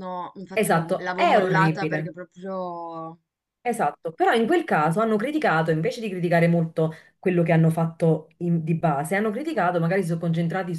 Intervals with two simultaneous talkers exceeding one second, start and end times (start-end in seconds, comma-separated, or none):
0.5-2.1